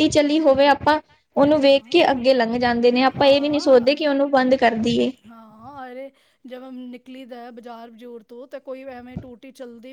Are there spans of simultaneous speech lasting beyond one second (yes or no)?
no